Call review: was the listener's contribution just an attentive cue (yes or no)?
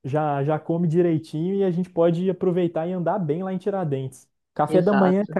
yes